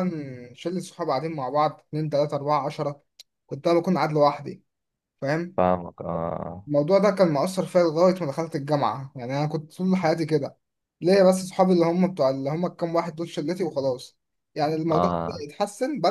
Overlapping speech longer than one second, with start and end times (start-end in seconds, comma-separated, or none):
none